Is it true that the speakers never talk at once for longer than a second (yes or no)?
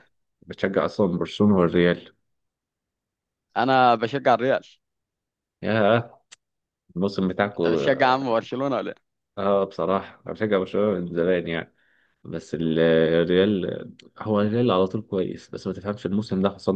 yes